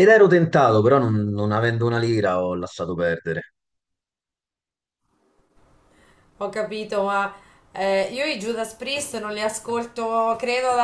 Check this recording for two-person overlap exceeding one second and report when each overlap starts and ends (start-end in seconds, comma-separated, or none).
none